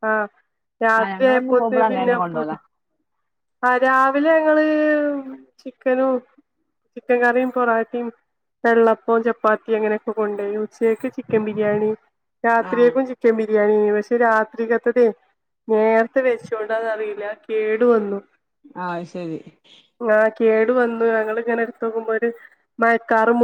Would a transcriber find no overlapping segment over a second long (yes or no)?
no